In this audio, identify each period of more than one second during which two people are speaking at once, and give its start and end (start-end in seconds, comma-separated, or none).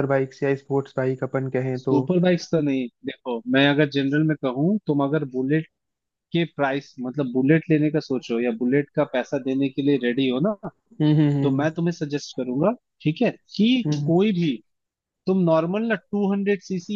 none